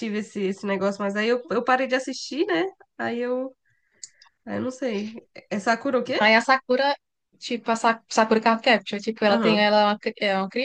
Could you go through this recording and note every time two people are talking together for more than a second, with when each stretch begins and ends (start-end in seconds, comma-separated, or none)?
none